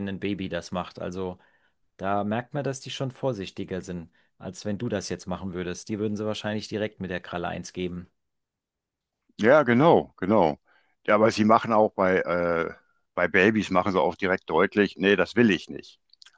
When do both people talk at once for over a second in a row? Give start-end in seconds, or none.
none